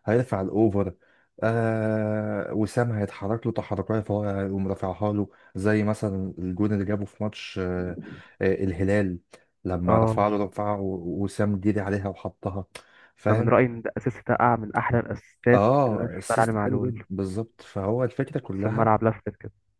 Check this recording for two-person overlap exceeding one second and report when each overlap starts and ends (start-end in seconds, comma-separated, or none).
15.5-17.0